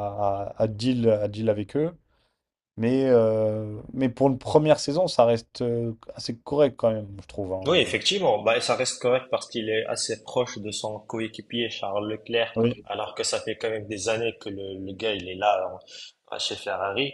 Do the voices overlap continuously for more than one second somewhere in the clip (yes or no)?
no